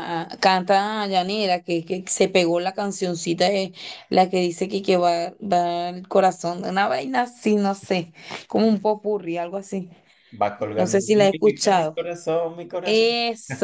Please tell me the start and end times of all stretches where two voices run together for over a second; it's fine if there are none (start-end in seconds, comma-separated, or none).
10.8-12.0